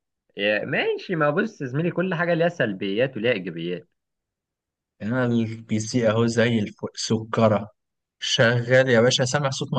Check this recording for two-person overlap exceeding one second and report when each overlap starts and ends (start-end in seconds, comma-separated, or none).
none